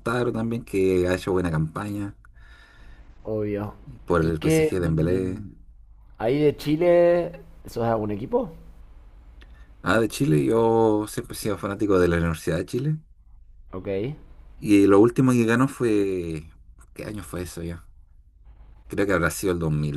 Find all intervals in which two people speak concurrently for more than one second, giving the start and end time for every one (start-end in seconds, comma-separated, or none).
4.2-5.4